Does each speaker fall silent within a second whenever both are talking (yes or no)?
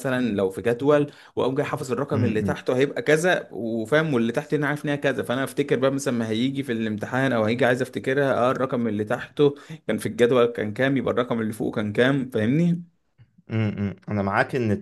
yes